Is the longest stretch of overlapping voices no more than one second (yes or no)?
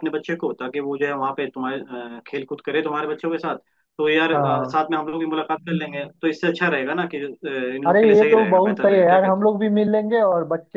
no